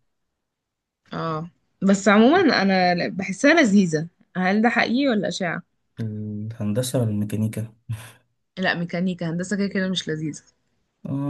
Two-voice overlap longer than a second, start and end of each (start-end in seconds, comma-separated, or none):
none